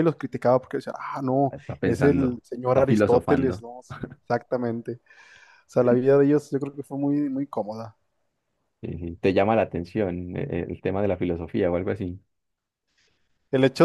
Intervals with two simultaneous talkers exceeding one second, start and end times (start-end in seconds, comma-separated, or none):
1.5-3.6